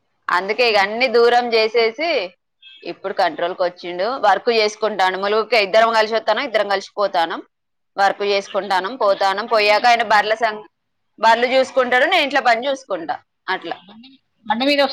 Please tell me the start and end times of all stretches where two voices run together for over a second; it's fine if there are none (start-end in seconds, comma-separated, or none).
8.5-10.3